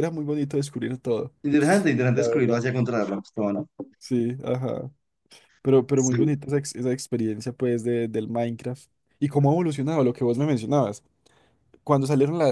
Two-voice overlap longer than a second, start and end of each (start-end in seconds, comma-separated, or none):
none